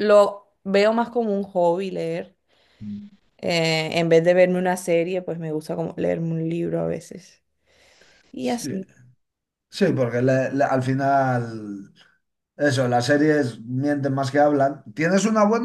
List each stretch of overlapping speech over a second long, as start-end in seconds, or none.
none